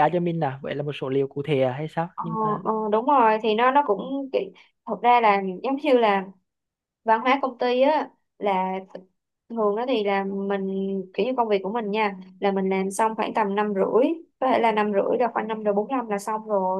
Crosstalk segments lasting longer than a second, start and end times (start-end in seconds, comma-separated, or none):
none